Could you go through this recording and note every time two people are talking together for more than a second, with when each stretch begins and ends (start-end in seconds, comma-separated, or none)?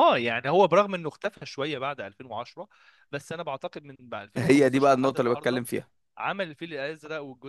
4.4-5.6